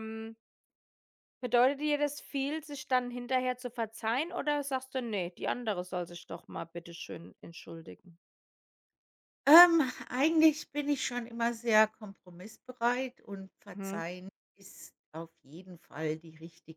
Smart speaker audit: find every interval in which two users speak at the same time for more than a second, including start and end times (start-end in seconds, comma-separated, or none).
none